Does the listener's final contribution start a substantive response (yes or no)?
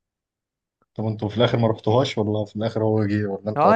yes